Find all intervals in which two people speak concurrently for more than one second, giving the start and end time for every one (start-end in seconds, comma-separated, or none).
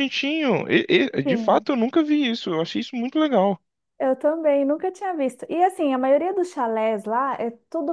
none